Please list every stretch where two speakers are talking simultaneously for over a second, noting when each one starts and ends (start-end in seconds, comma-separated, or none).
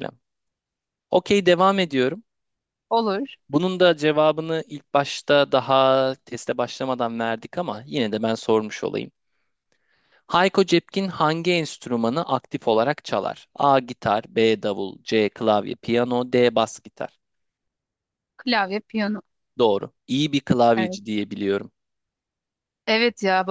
none